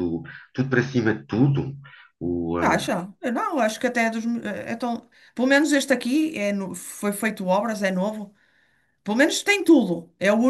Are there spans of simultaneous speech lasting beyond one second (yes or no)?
no